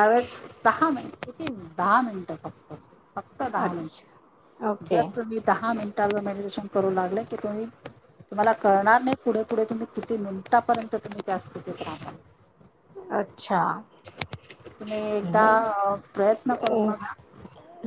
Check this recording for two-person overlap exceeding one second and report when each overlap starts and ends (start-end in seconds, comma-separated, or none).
3.6-5.0